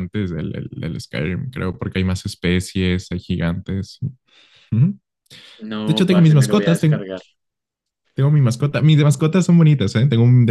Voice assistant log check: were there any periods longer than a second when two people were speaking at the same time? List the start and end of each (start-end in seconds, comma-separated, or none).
5.8-7.0